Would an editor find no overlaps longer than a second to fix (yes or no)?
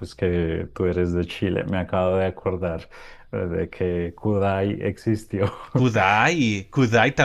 yes